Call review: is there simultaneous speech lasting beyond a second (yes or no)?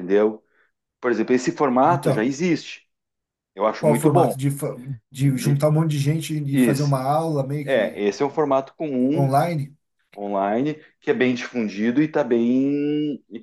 no